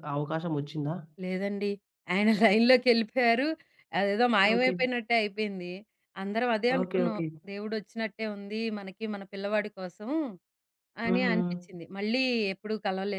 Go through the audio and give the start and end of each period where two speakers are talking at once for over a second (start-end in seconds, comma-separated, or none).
none